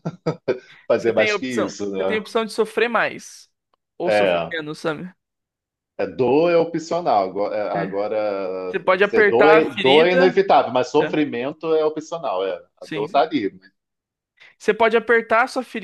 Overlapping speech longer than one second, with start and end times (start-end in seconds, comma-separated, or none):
0.9-2.2, 8.7-10.4